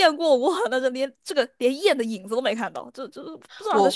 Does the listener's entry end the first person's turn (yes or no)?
yes